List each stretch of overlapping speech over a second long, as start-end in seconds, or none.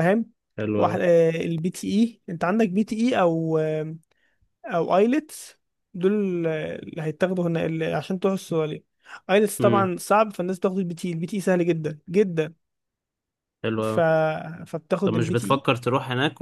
none